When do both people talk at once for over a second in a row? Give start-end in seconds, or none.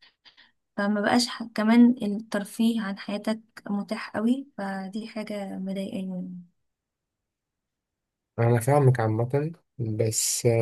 none